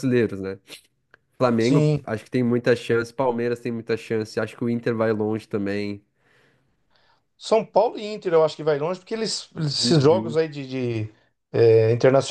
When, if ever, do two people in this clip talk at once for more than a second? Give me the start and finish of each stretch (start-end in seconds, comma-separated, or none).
none